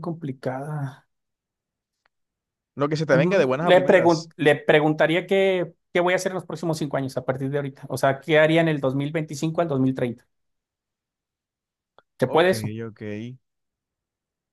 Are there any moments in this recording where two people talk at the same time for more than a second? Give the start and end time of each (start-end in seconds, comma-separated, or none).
3.1-4.3